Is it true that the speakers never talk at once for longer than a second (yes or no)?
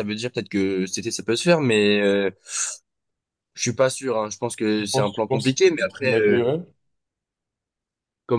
no